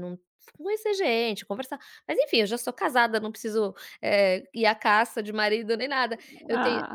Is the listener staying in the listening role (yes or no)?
yes